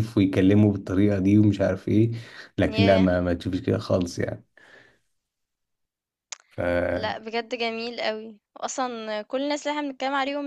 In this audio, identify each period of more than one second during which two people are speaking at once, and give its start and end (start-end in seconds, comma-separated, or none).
none